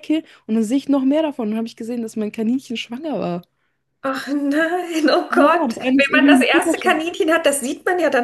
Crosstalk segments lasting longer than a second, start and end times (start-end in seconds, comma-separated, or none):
5.3-7.0